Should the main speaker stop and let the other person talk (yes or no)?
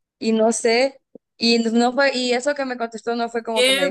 yes